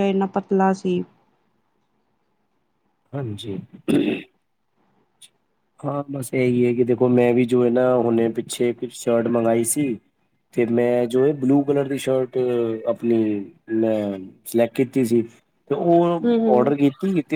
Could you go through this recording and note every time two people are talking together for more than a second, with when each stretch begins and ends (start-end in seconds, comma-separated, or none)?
none